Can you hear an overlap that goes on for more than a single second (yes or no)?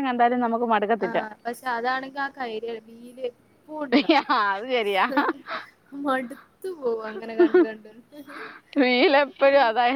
no